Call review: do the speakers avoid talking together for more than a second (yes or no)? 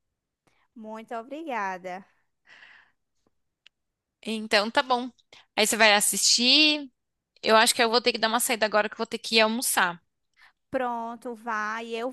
yes